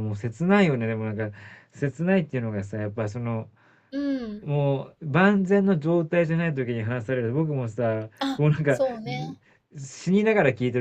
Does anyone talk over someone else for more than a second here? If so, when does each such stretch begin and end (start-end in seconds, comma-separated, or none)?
none